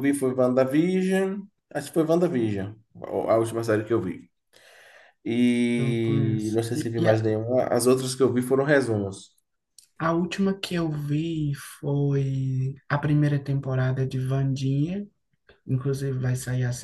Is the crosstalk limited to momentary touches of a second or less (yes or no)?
no